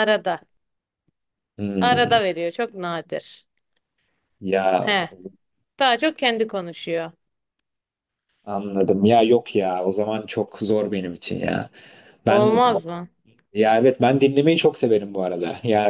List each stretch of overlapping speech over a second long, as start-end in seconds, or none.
none